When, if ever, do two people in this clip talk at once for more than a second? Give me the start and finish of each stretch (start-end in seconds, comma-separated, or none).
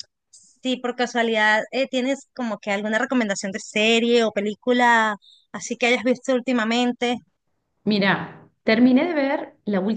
none